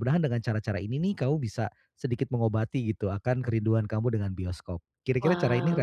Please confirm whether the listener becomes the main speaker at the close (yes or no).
yes